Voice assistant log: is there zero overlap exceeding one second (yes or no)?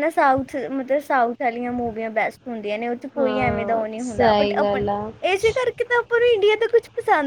no